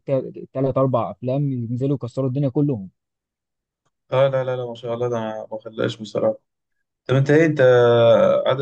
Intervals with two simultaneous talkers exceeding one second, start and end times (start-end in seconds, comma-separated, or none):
none